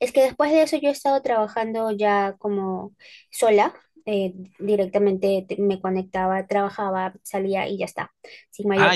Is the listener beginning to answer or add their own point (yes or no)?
yes